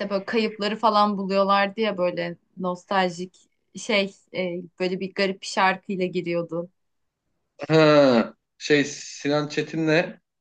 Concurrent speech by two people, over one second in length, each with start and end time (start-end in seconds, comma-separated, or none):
none